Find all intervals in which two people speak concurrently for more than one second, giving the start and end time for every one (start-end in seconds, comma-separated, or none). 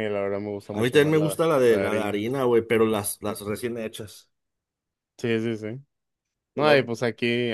0.7-2.2